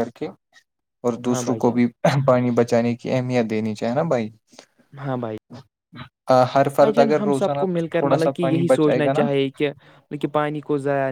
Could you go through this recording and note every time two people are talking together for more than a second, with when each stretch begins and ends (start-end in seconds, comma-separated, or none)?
6.8-9.2